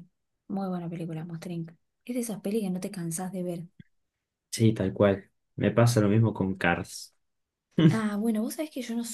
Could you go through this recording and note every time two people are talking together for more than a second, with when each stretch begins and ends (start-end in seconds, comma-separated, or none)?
none